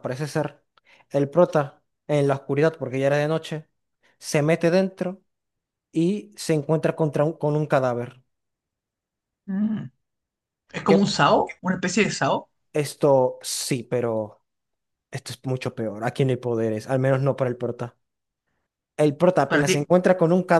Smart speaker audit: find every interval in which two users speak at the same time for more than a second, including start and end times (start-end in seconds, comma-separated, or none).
none